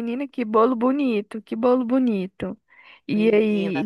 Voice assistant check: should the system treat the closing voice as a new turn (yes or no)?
no